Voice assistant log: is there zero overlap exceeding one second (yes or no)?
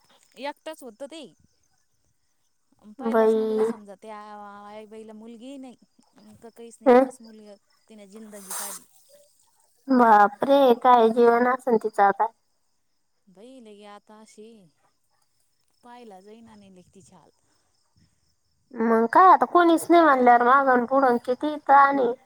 yes